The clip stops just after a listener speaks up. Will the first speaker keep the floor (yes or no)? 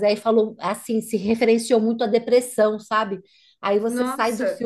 yes